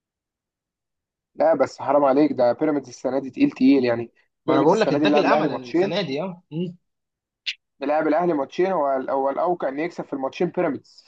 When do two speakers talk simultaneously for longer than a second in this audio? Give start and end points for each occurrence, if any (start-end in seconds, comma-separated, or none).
4.5-6.0